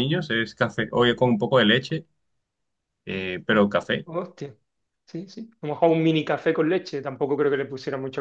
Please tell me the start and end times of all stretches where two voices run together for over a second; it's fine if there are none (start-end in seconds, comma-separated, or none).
none